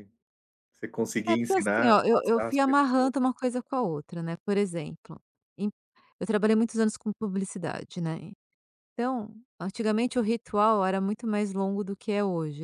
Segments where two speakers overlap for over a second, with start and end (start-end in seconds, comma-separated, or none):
1.3-3.1